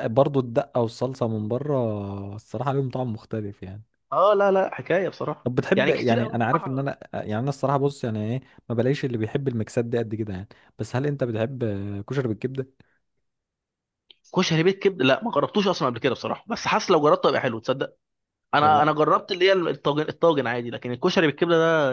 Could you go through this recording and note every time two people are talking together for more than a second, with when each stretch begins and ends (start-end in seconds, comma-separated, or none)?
5.4-6.9